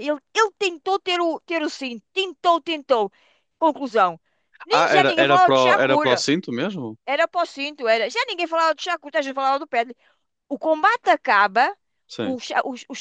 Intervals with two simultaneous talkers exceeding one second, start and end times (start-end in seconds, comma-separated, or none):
4.7-6.2